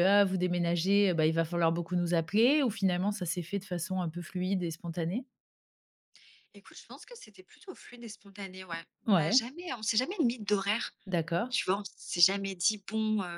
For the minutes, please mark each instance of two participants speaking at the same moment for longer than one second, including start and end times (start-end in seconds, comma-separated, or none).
none